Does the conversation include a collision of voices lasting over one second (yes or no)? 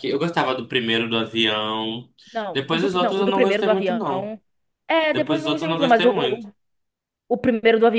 yes